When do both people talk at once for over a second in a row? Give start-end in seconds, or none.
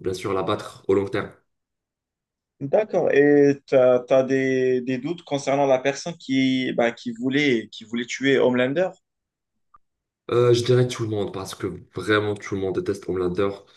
none